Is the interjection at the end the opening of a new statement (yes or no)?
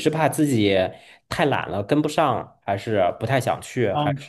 yes